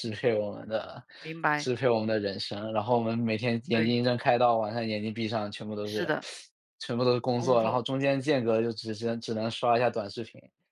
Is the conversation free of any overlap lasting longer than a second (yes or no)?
yes